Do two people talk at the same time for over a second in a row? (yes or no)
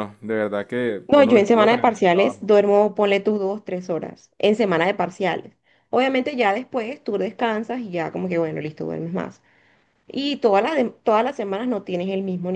yes